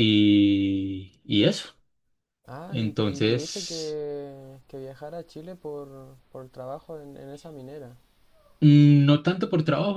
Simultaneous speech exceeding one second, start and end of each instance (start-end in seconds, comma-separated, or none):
2.7-4.0